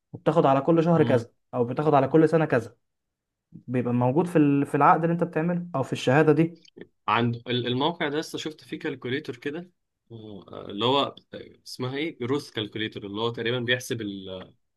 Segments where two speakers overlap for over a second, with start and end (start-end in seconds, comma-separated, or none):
none